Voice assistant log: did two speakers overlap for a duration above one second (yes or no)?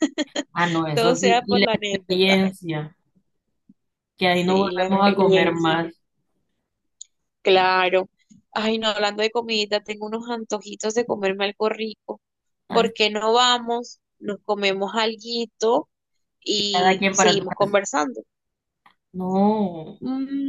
yes